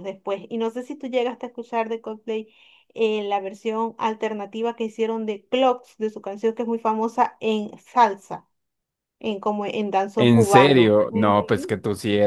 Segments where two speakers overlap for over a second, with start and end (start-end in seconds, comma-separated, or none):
10.2-11.4